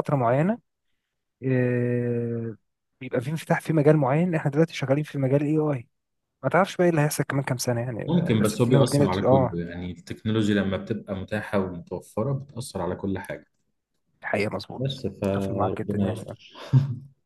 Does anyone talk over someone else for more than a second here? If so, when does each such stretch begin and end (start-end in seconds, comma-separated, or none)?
8.1-9.6, 14.8-16.2